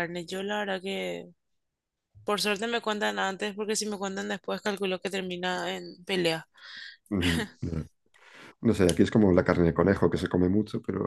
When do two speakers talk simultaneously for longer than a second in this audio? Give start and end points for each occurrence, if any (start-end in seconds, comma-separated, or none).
none